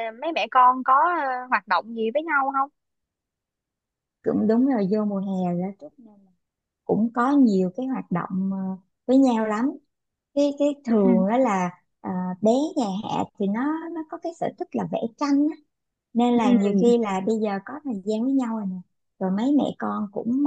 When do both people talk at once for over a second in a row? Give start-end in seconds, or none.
none